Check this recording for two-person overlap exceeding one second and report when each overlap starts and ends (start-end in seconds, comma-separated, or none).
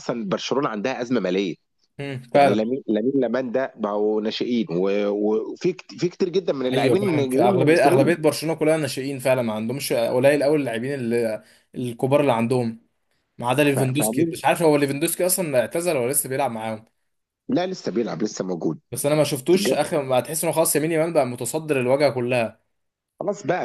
6.7-8.2